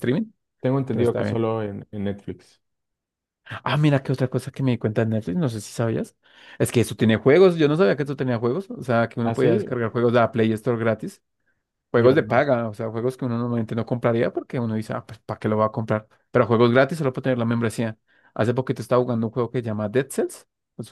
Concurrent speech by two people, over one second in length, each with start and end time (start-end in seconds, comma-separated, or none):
none